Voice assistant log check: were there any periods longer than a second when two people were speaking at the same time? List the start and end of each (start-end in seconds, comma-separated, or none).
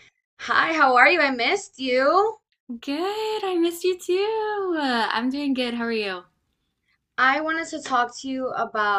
none